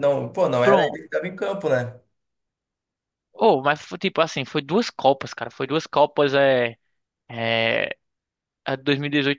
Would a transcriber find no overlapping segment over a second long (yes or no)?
yes